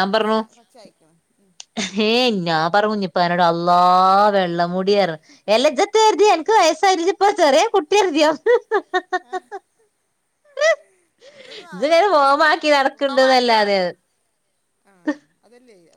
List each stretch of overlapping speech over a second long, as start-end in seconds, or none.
11.7-13.5